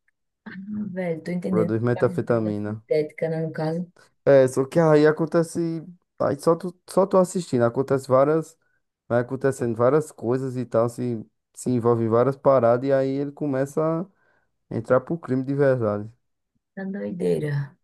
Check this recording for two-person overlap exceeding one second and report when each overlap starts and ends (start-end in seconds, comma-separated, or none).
1.5-2.8